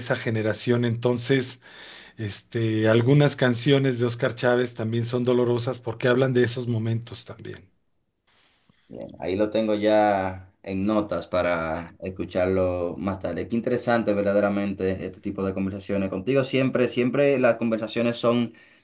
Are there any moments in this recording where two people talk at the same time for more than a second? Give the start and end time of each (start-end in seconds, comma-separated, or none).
none